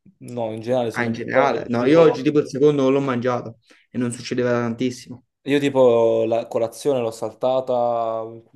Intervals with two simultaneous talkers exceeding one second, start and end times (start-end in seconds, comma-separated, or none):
0.9-2.2